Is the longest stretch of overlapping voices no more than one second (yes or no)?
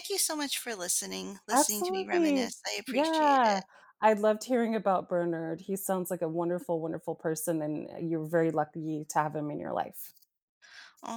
no